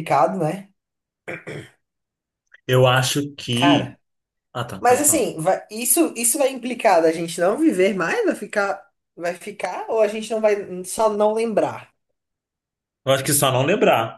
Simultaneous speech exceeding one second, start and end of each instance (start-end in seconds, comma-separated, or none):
none